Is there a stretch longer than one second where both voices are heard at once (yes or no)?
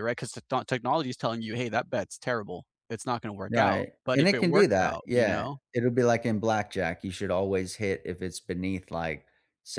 yes